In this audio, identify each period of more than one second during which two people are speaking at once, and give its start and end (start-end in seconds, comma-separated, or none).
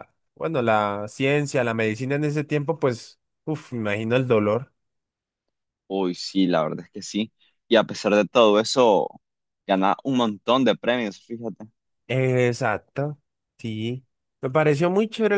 none